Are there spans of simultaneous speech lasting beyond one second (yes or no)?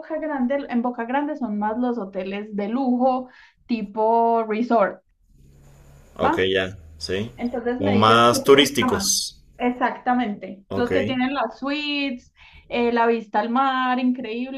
yes